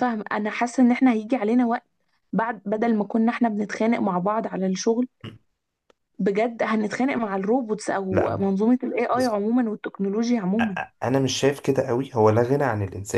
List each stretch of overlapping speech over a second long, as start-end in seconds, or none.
none